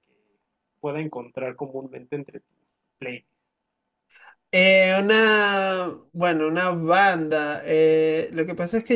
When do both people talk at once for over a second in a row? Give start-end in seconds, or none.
none